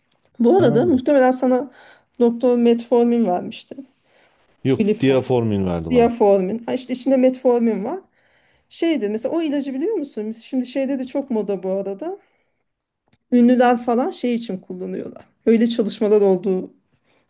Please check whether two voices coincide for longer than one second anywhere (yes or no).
no